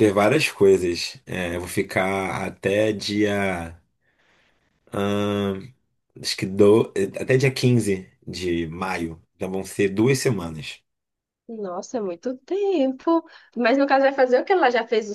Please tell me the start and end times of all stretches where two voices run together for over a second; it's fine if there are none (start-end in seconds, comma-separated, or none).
none